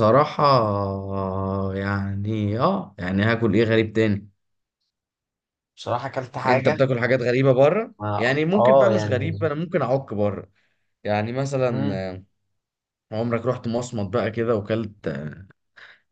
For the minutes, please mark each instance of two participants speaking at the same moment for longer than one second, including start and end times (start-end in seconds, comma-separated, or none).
8.0-9.5